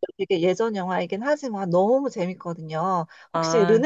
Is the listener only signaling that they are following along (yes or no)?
yes